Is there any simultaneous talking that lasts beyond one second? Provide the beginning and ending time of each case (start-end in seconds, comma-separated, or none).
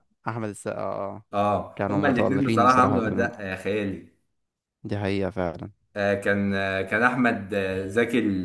1.8-3.3